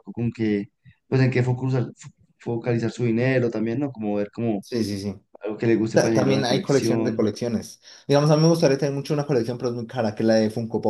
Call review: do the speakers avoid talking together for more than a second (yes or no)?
no